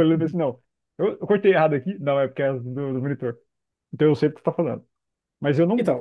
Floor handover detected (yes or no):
no